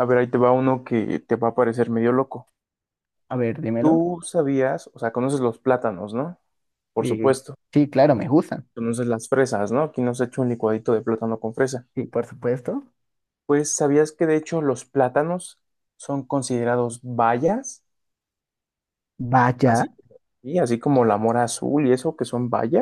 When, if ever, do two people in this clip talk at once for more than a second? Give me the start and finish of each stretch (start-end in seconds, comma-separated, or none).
none